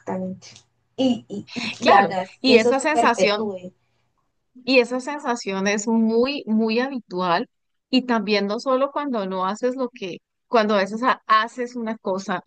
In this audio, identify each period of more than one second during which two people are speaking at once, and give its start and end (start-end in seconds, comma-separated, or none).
1.8-3.5